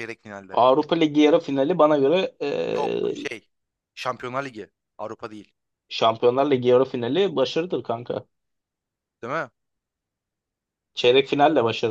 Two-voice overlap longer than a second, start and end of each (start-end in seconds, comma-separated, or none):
none